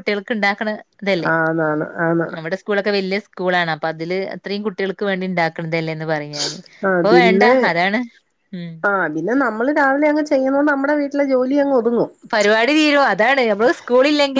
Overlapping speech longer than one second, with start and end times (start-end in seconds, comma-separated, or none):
none